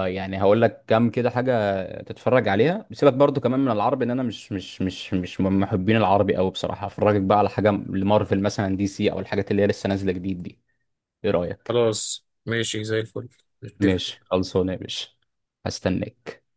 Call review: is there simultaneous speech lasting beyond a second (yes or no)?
no